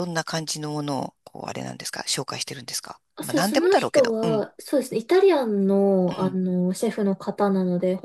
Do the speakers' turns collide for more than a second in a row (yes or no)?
yes